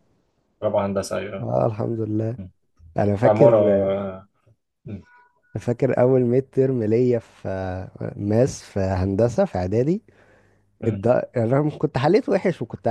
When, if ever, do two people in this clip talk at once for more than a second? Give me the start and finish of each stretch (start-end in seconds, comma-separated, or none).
none